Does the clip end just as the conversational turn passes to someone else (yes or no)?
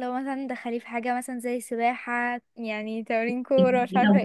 yes